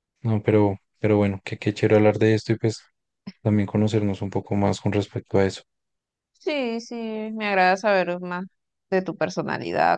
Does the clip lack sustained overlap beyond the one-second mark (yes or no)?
yes